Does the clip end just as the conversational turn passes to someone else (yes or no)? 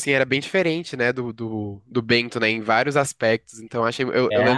no